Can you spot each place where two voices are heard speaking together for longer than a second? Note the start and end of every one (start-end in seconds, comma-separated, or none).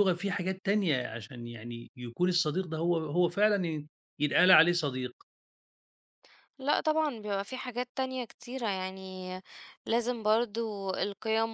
none